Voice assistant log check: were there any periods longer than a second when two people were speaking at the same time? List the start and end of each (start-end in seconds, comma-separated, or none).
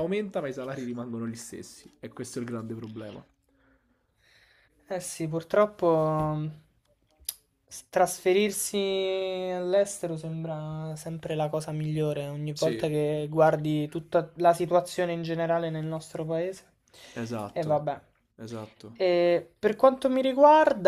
none